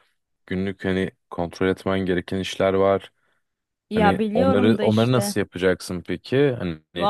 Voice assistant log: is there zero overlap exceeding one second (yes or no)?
no